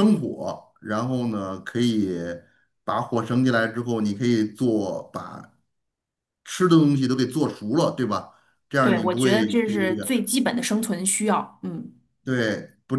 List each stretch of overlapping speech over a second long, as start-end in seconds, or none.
8.8-10.2